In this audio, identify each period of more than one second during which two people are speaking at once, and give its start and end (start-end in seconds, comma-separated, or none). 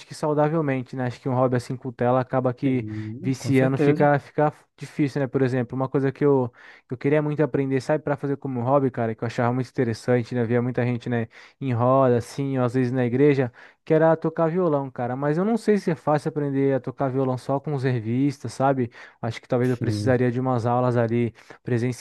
2.7-4.1